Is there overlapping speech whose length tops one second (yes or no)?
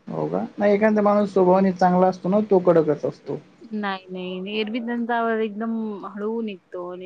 no